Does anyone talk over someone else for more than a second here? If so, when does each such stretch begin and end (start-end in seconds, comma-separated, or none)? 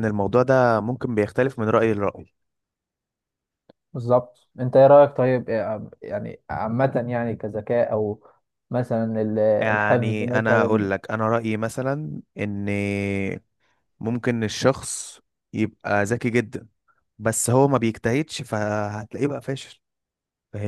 9.6-10.9